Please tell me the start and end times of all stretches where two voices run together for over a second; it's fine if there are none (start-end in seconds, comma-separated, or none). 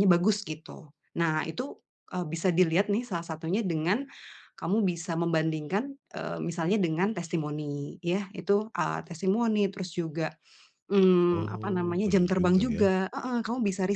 11.3-12.9